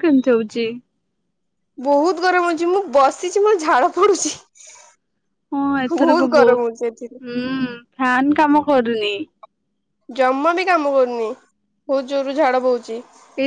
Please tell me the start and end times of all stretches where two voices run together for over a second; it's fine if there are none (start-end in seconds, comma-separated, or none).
6.0-7.2